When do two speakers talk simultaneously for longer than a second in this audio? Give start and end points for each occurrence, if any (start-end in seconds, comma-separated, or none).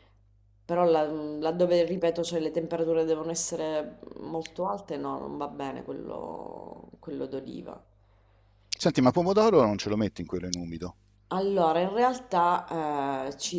none